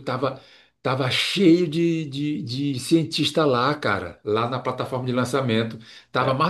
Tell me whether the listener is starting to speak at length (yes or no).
no